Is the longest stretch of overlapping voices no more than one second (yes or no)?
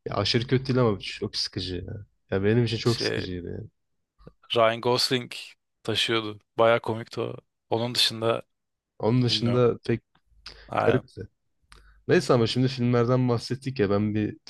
yes